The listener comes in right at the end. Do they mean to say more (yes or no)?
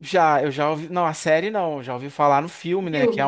no